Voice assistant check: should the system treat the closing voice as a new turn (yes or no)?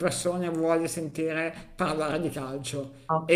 no